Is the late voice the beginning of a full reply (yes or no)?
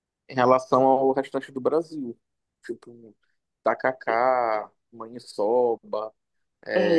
yes